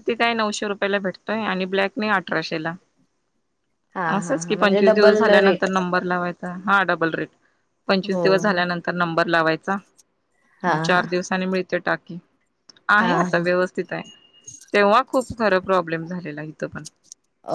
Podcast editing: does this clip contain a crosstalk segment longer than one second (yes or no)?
yes